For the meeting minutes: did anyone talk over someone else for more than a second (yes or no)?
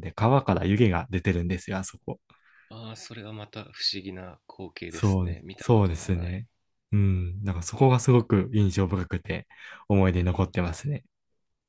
yes